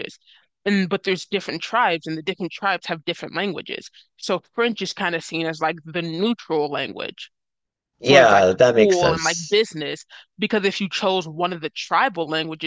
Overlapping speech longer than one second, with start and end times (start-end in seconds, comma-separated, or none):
8.1-9.6